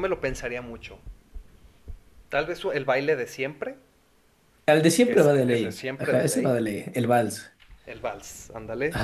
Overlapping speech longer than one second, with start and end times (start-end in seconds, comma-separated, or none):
5.0-6.6